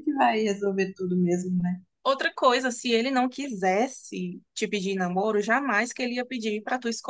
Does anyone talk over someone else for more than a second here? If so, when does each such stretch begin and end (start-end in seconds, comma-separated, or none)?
none